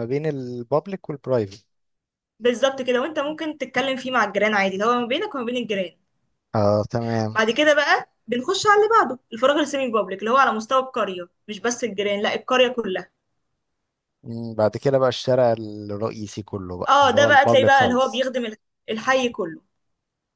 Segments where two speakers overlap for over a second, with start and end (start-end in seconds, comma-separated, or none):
16.9-18.2